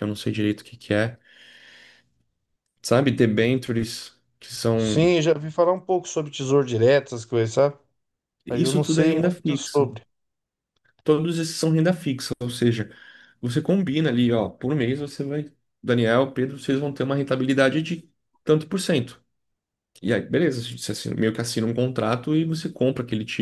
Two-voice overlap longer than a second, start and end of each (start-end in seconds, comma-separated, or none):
8.5-9.9